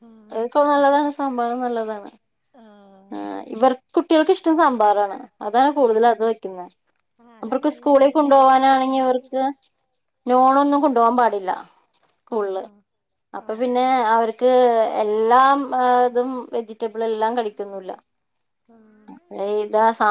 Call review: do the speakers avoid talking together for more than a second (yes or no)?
no